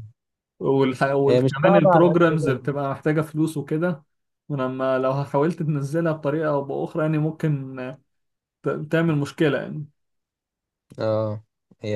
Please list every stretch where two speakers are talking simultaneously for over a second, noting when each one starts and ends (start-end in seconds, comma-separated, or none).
1.3-2.7